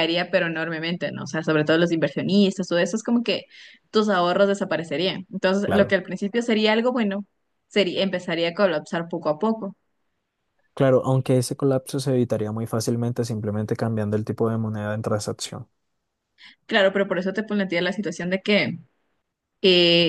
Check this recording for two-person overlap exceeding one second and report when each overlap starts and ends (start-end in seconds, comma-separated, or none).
none